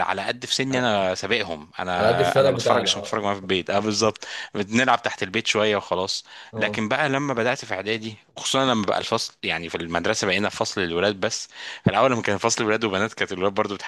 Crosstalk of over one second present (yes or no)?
yes